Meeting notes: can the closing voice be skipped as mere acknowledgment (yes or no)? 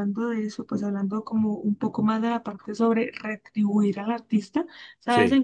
yes